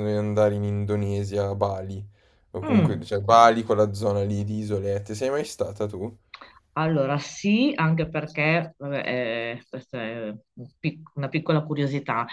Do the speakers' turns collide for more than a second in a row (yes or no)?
no